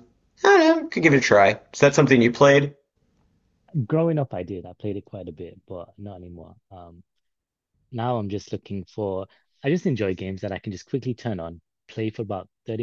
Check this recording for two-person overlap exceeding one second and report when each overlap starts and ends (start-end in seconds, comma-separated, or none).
none